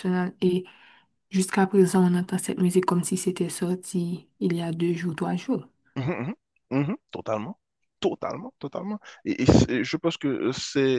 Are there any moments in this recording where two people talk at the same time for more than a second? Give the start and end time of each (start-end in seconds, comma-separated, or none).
none